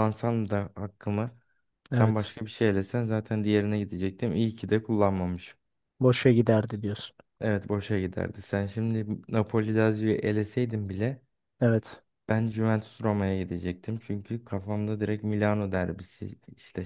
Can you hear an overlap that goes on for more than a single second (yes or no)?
no